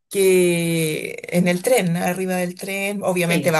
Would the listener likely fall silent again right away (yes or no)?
yes